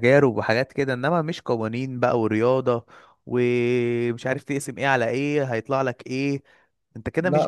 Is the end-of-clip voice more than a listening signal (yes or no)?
no